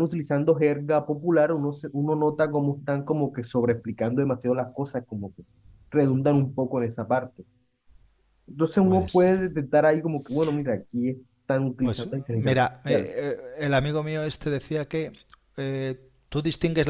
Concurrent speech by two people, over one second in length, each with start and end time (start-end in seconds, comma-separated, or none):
11.8-13.1